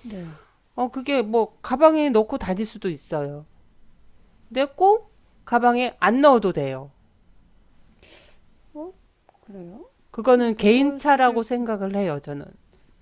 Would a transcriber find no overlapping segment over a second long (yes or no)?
no